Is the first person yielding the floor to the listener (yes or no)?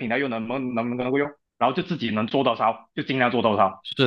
yes